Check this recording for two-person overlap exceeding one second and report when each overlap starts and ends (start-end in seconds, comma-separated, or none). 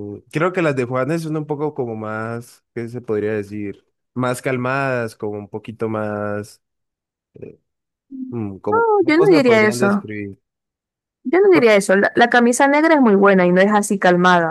8.7-10.1